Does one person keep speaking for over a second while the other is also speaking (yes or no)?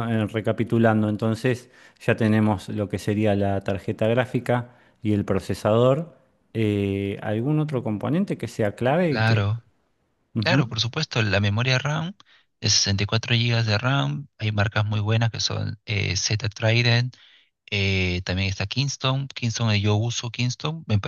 no